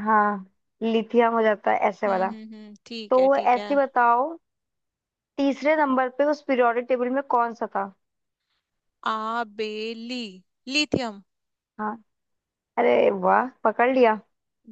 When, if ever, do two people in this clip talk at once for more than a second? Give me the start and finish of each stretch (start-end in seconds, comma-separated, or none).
none